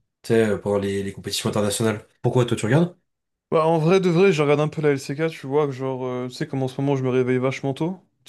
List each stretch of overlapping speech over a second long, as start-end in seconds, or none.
none